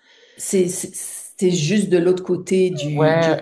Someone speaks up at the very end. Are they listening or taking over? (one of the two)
taking over